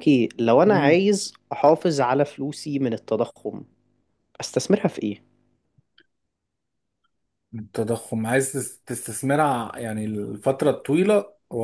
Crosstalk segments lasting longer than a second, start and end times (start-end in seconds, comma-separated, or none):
none